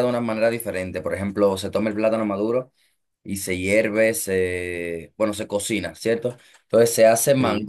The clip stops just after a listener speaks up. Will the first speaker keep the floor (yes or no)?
yes